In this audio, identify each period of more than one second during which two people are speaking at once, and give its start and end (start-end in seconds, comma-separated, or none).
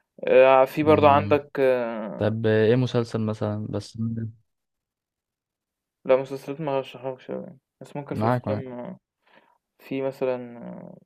none